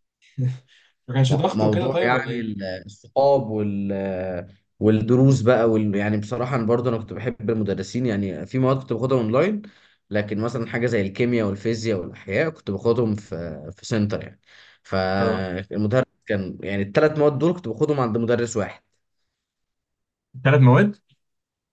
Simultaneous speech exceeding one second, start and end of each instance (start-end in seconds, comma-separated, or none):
1.3-2.6